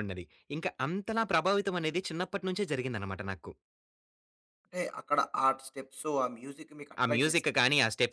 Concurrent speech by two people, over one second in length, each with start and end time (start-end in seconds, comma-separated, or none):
none